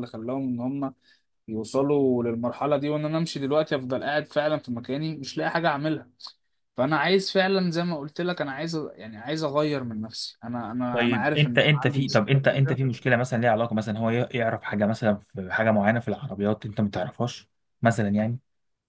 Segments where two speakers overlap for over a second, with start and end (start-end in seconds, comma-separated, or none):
10.9-12.8